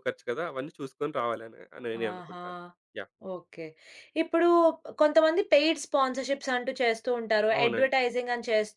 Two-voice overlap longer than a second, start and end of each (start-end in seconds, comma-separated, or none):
none